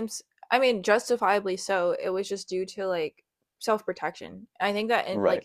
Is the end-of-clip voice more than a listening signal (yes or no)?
no